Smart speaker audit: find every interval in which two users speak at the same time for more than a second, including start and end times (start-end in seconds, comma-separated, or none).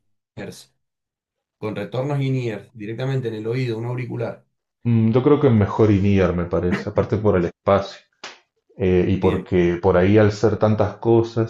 none